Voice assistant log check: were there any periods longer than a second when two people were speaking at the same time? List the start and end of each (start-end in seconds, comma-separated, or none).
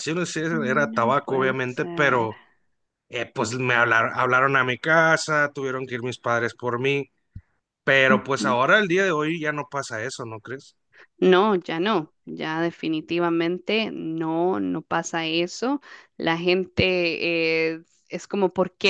0.5-2.3